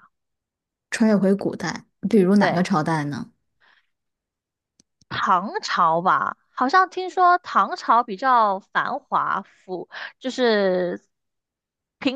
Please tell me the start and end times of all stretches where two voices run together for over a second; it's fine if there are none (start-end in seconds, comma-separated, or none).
none